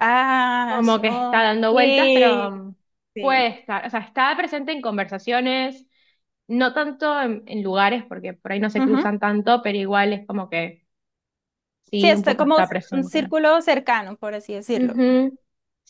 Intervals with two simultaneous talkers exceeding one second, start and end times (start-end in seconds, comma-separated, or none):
0.7-2.5, 12.0-13.3